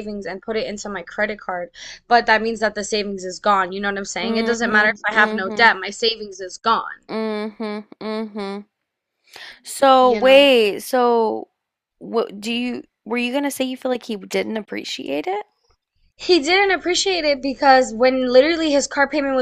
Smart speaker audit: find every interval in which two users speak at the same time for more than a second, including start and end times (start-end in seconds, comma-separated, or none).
4.2-5.6